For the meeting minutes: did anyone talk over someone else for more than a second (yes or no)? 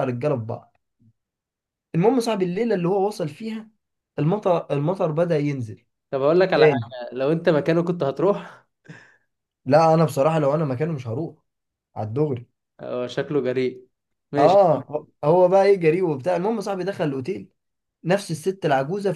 no